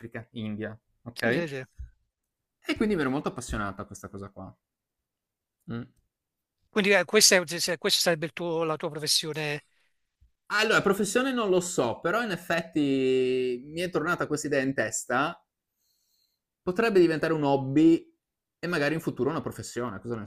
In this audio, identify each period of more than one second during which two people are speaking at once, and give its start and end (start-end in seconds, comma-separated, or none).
none